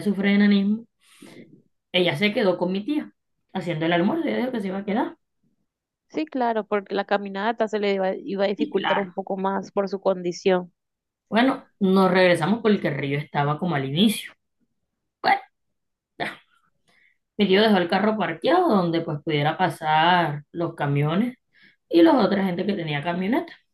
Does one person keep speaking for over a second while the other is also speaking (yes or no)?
no